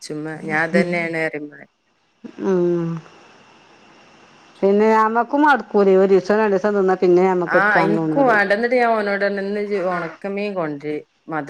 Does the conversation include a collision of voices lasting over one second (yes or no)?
no